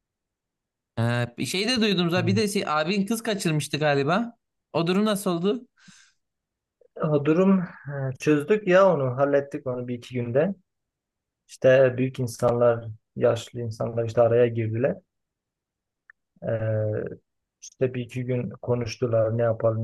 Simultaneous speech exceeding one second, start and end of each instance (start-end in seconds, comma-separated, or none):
none